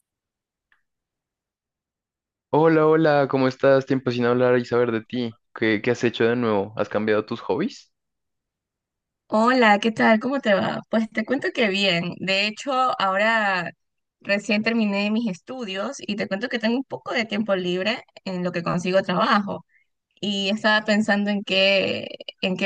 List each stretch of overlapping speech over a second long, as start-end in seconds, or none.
none